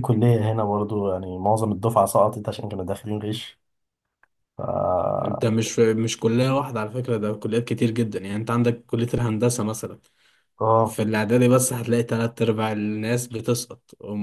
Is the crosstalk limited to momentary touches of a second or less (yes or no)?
yes